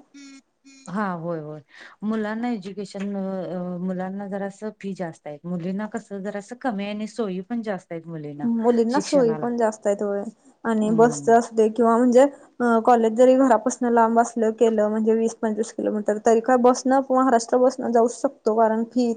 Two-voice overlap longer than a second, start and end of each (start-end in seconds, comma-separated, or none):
none